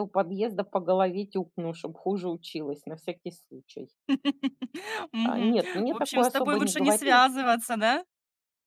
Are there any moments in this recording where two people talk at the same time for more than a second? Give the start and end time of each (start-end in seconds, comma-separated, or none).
5.2-7.2